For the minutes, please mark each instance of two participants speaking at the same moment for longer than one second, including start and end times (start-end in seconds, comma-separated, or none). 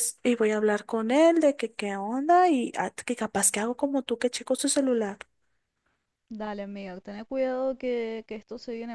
none